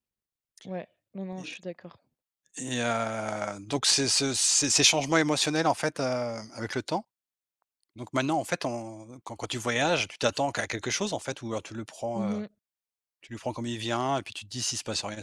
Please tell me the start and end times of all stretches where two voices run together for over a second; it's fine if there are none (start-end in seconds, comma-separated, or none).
none